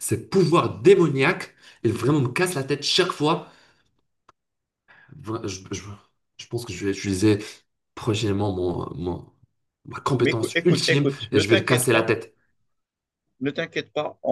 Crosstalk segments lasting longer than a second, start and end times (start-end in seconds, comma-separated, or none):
10.2-12.1